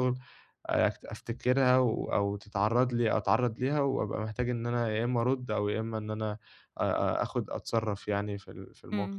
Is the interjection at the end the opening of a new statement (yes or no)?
yes